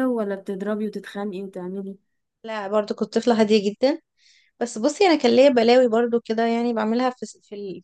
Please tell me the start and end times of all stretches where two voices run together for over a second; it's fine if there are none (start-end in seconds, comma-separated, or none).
none